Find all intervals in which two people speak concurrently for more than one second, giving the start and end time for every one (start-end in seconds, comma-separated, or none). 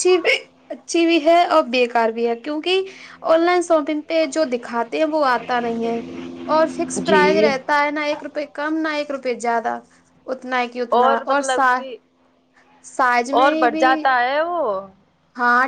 none